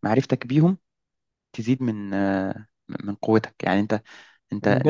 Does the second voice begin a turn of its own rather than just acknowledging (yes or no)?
yes